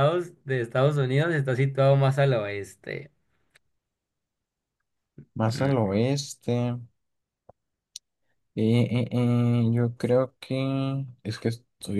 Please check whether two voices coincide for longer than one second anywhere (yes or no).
no